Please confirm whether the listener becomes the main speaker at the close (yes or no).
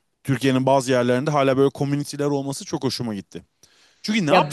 no